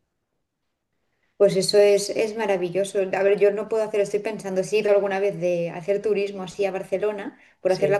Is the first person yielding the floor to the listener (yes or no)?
no